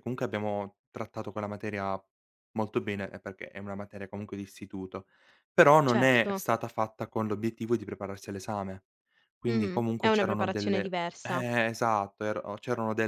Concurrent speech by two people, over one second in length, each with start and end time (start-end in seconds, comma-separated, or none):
9.5-11.4